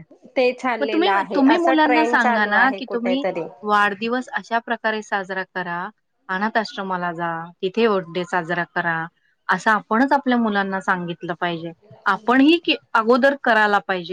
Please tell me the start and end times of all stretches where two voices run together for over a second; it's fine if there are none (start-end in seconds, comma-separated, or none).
0.8-3.2